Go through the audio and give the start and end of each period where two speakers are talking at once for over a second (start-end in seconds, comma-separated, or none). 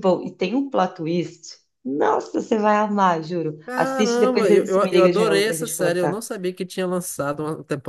3.7-6.2